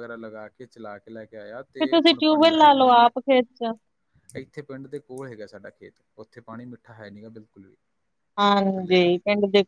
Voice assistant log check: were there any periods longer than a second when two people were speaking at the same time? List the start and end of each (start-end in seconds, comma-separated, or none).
1.8-3.1